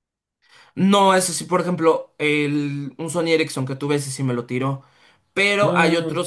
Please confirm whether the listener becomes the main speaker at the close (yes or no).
no